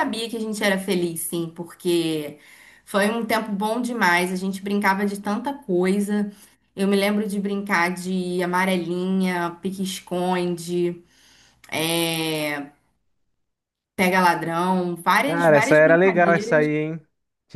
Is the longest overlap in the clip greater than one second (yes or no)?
yes